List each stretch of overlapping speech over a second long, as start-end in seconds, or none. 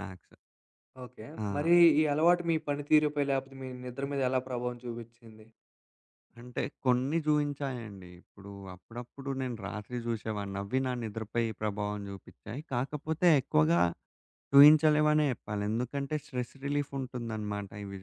none